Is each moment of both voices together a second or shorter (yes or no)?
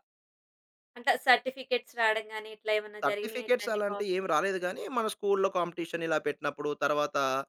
no